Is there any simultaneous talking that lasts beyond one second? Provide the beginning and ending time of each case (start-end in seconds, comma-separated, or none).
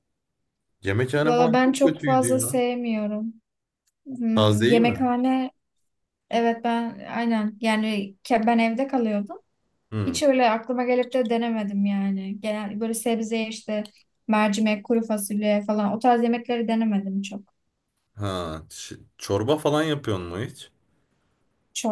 1.2-2.6